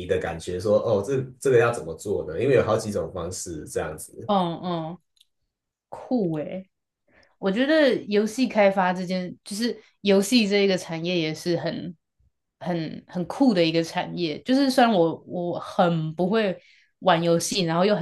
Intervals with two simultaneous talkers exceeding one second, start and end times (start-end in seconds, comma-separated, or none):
none